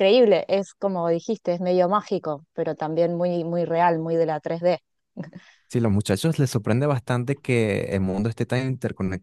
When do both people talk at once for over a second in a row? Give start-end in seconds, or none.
none